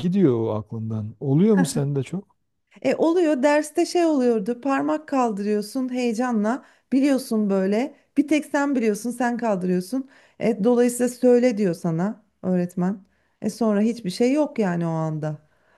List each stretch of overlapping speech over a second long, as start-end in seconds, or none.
none